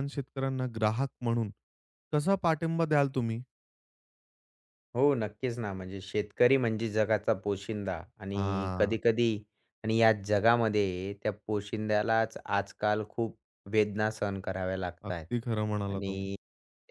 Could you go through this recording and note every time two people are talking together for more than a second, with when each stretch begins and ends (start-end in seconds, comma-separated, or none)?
none